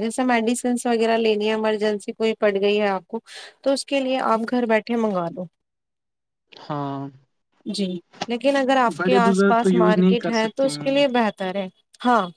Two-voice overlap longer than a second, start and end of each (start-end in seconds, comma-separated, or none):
9.0-10.9